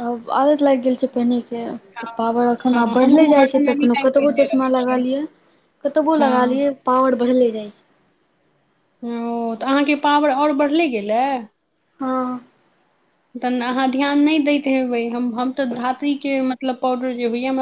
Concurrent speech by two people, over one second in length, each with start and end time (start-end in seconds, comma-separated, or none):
2.7-5.0